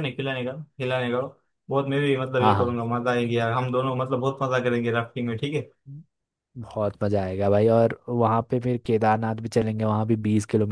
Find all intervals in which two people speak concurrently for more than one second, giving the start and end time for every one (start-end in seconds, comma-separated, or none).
none